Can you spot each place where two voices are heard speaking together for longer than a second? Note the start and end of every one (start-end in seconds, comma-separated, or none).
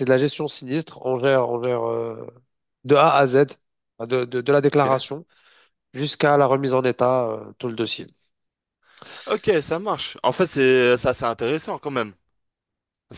none